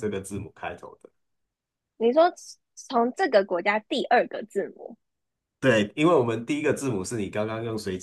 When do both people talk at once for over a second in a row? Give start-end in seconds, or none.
none